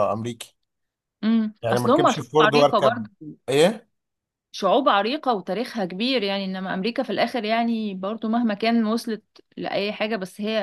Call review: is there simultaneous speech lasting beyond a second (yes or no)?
yes